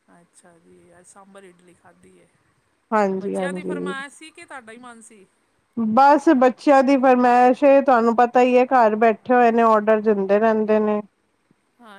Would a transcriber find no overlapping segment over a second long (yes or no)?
yes